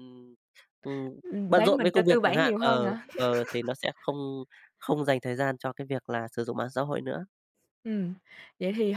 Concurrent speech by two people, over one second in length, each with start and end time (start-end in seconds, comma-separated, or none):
1.6-3.0